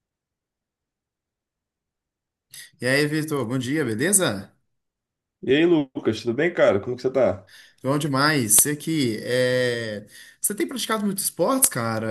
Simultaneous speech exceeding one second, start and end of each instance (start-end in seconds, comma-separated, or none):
none